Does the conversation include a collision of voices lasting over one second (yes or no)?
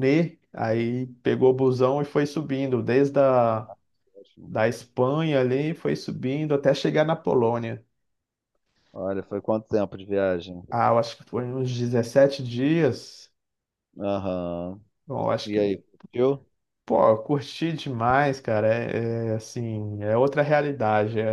no